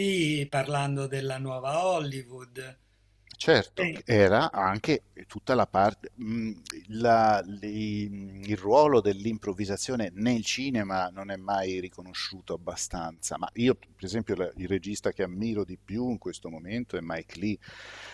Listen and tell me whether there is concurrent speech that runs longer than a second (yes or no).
no